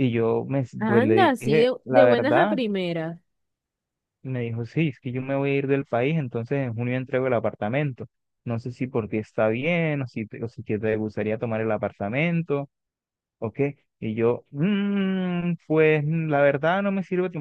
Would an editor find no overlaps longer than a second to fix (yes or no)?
no